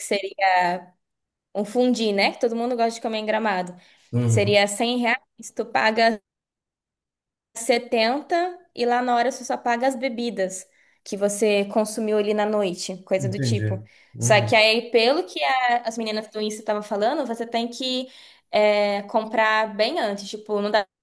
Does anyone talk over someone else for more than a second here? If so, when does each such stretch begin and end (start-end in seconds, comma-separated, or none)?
13.2-14.6